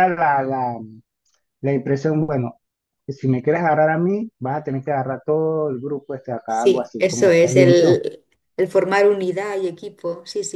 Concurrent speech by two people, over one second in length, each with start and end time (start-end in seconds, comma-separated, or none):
6.5-8.0